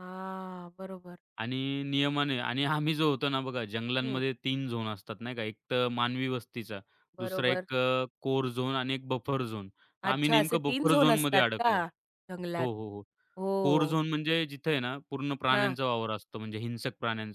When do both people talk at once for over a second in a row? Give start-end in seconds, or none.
10.0-11.8